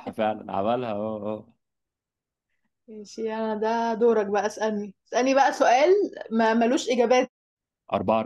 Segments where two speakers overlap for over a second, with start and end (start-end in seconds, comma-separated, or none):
none